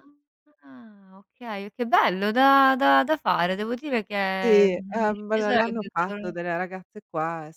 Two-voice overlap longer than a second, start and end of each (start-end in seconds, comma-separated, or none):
4.4-6.3